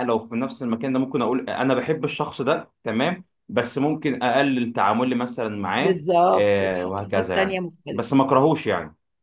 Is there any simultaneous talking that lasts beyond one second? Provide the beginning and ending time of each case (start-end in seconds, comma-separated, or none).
5.8-8.1